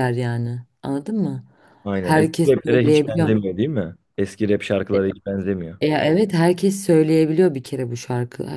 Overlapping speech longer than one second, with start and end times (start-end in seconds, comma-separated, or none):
2.0-3.4